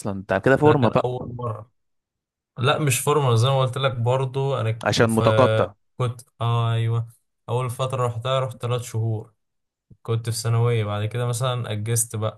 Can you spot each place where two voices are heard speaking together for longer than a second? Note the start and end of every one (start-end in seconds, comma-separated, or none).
none